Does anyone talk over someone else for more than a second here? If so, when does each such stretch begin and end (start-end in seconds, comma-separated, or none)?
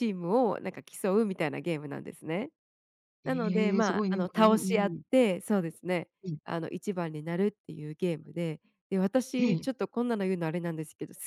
3.2-5.0